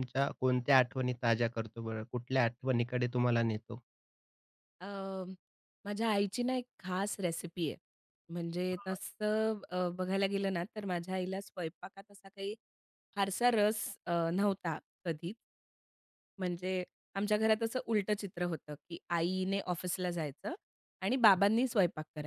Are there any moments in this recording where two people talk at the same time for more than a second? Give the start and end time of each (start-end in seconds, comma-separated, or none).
none